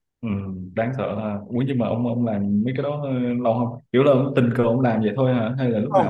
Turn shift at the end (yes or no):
yes